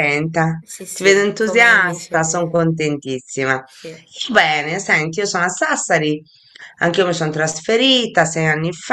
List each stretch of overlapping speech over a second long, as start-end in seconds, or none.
0.6-2.6